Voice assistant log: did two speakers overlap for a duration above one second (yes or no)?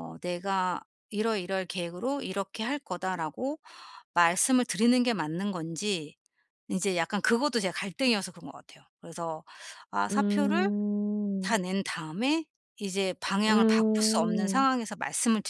yes